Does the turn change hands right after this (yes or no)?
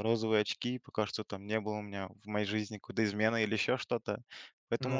no